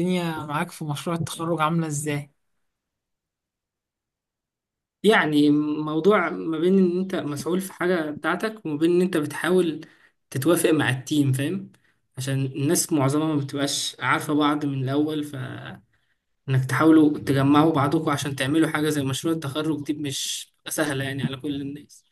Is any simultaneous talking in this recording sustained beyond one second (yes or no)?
no